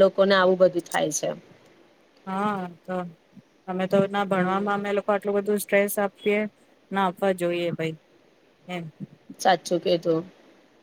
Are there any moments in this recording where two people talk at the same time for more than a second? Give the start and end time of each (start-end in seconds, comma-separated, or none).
none